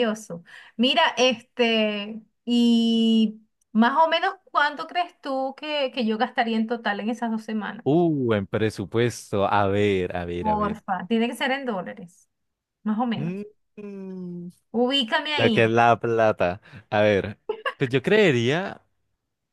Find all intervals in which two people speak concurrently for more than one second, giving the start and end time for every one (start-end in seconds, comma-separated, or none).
none